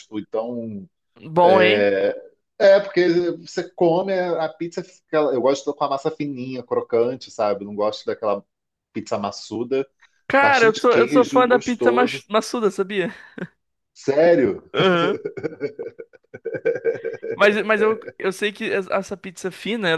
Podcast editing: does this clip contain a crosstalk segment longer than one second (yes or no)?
yes